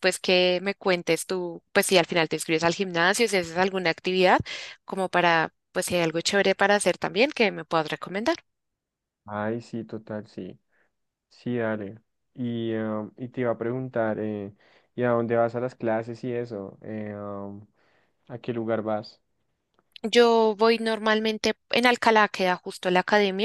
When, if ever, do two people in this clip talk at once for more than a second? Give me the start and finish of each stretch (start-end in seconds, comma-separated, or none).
none